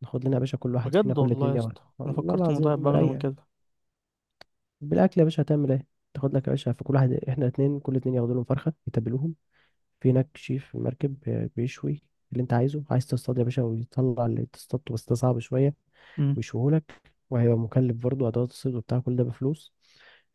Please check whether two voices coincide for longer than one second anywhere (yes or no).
yes